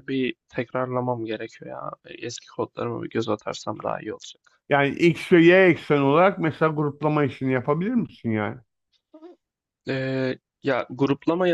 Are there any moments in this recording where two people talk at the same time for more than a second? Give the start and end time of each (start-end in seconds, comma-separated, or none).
none